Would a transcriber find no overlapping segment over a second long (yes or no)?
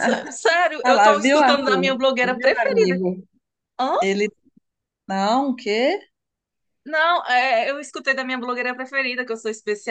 no